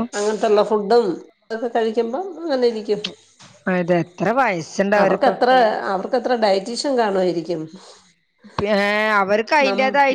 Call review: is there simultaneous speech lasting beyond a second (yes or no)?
no